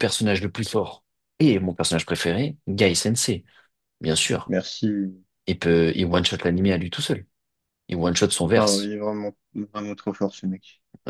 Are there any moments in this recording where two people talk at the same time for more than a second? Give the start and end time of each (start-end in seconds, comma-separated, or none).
none